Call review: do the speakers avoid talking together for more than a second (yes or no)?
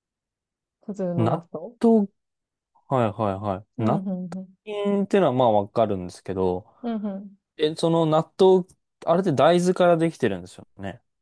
yes